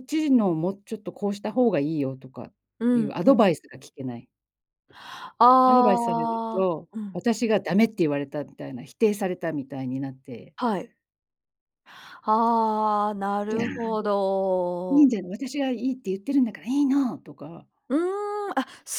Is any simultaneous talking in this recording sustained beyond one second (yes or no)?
yes